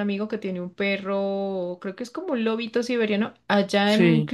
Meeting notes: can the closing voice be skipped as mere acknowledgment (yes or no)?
yes